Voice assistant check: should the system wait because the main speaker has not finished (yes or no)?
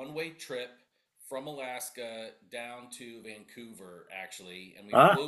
yes